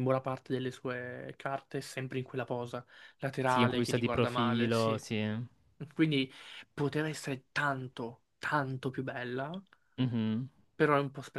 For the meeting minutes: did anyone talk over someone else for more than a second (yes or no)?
yes